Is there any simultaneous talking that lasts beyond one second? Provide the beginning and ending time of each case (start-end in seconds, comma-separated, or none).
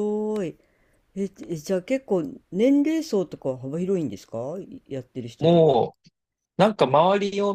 none